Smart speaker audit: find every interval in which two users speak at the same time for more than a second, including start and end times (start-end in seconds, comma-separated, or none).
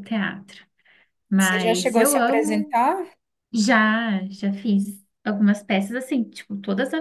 1.4-2.8